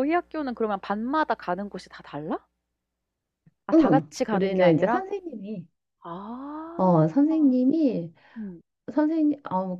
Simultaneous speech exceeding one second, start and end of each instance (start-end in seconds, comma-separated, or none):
3.7-5.0